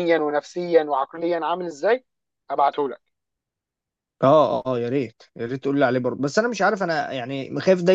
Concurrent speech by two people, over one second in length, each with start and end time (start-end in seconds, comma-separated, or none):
none